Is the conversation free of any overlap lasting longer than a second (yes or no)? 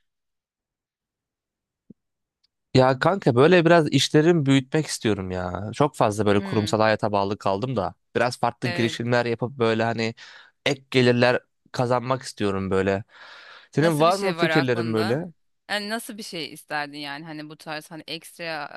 no